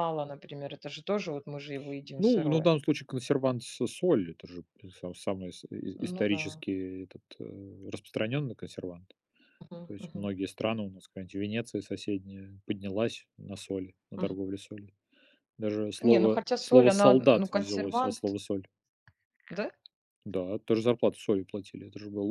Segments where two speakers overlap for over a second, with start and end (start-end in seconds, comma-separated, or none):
16.0-18.4